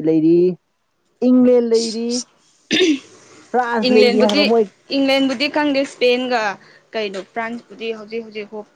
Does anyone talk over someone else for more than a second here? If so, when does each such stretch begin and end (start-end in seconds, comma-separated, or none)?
none